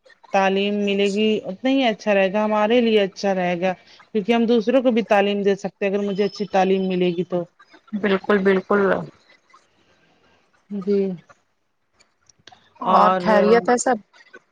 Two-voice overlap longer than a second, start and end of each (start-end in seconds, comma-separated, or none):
none